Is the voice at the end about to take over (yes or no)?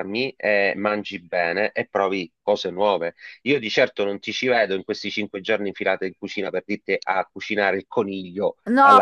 yes